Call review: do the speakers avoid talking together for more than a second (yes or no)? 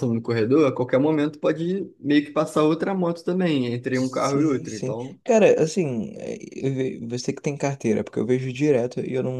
no